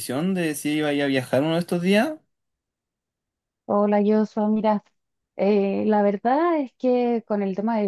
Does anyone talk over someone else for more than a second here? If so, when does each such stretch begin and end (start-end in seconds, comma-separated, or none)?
none